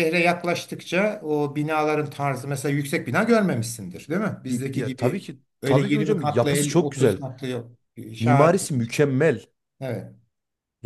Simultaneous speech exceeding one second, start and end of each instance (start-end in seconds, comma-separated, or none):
4.5-7.2